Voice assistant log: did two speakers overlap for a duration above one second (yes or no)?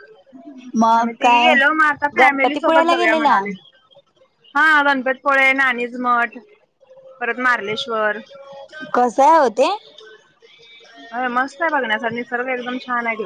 yes